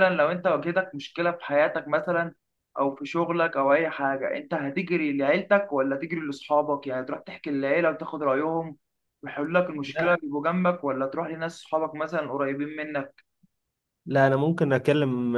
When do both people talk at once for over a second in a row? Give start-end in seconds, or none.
none